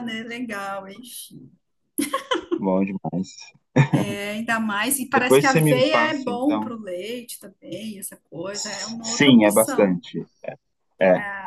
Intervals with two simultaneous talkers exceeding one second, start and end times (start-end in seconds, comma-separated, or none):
5.1-6.8, 8.5-10.0